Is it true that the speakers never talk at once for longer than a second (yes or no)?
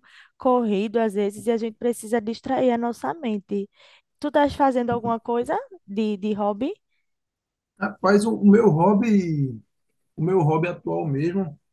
yes